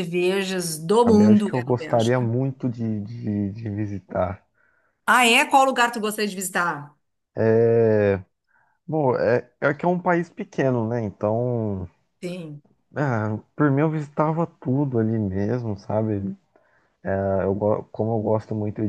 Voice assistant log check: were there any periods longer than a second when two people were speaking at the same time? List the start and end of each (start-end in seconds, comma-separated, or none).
1.1-2.3